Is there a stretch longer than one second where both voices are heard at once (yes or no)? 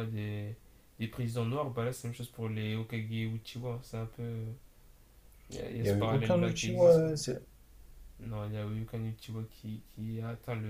yes